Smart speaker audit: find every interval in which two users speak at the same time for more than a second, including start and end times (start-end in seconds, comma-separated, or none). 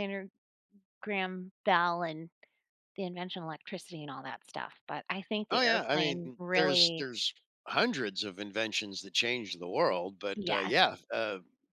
5.5-7.1